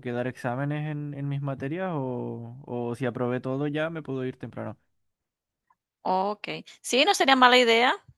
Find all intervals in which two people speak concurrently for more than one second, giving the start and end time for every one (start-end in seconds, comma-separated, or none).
none